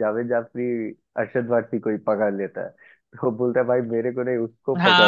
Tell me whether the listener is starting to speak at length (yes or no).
yes